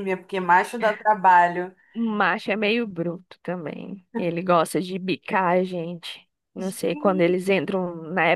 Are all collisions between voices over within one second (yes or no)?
yes